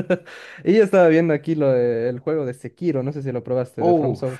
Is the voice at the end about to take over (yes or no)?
yes